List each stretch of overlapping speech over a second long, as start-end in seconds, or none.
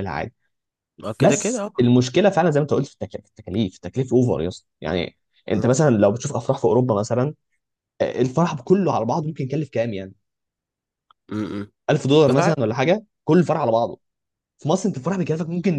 none